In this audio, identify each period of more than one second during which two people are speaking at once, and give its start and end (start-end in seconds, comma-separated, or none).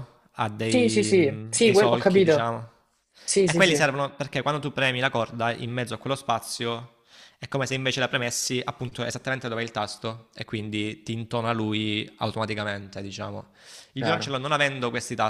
0.6-2.5